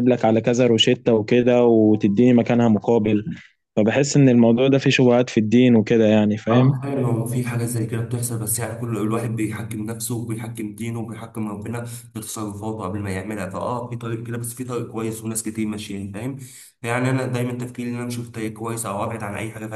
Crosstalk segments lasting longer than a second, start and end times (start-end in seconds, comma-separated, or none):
none